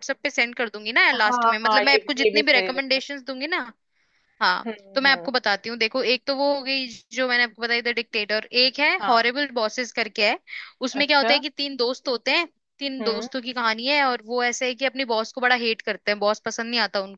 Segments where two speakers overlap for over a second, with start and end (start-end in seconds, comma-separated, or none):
1.1-3.0